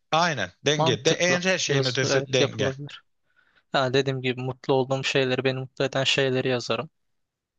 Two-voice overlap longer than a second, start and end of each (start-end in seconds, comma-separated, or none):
0.8-2.7